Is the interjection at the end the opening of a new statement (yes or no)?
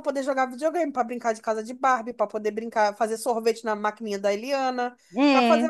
no